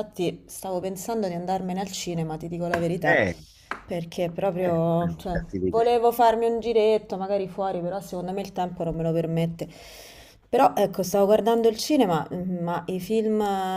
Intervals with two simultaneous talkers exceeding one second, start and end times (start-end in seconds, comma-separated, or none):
4.6-6.0